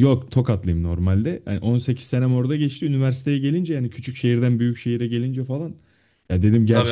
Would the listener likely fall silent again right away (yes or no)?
yes